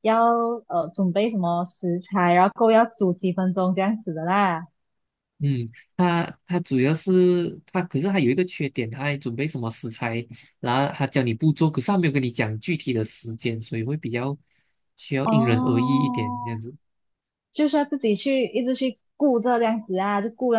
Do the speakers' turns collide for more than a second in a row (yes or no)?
yes